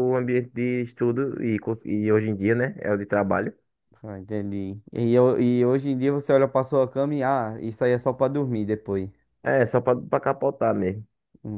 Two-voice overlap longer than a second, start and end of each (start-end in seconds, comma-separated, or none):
none